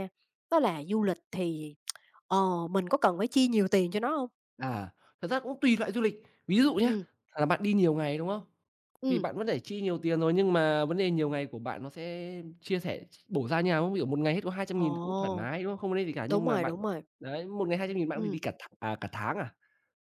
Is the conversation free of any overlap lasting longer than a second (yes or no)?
yes